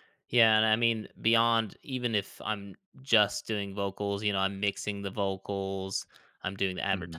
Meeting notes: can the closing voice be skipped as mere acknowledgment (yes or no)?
yes